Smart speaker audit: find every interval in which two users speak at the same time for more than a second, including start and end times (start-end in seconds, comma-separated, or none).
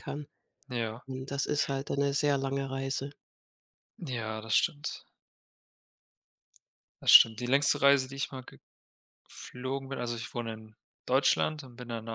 none